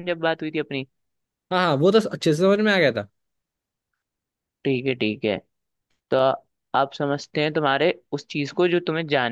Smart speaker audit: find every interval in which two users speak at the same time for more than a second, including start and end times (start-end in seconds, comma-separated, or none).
none